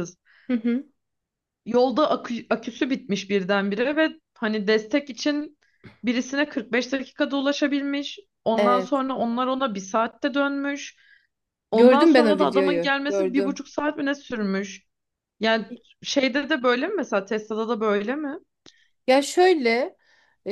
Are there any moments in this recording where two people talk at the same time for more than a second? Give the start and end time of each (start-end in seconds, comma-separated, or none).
11.7-13.6